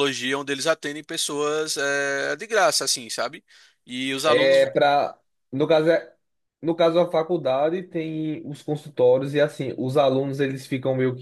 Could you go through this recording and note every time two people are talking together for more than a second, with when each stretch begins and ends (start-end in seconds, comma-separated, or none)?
none